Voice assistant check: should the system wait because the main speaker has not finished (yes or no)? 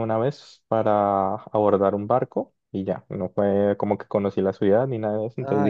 yes